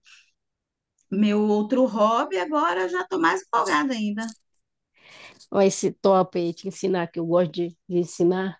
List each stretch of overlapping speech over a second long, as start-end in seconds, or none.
none